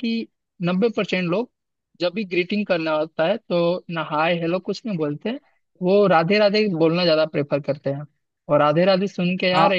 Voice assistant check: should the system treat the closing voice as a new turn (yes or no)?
no